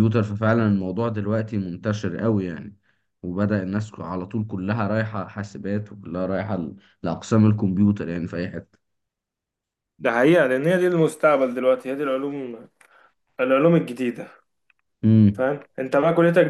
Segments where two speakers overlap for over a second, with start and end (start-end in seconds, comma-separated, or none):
none